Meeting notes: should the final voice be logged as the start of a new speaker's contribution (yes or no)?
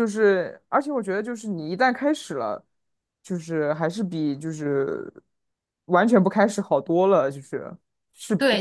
yes